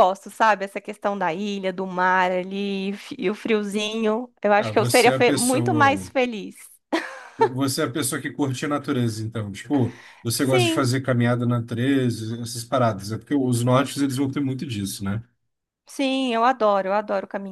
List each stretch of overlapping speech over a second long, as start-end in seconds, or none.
4.6-6.1